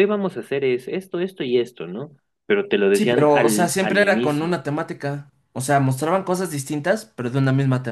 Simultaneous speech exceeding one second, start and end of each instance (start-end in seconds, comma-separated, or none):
2.9-4.6